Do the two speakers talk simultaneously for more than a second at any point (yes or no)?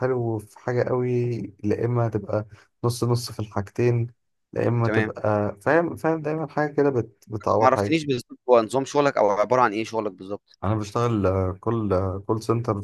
no